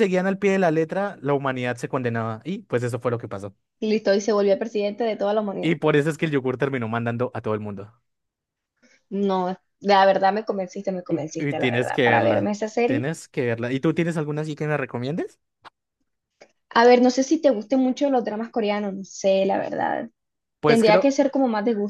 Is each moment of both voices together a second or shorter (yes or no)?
no